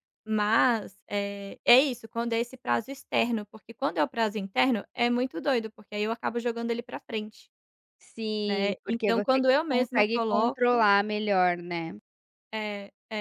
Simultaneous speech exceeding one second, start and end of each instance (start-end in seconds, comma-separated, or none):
8.4-10.9